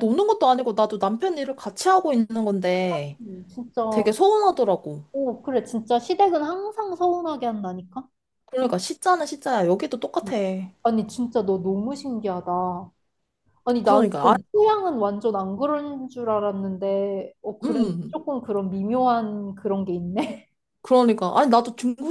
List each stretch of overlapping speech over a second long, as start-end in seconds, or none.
none